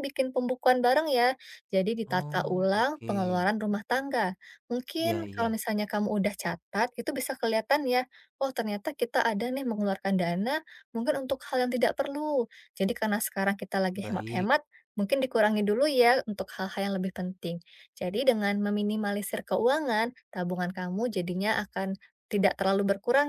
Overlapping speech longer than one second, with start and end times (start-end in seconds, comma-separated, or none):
2.0-3.5